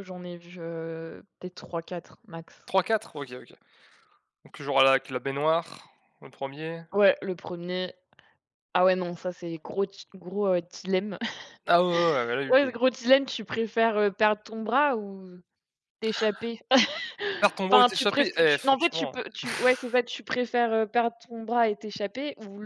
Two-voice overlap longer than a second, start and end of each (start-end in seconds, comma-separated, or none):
17.7-19.4